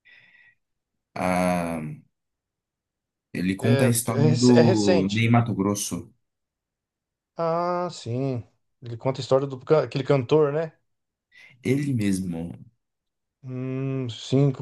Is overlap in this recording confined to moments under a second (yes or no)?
no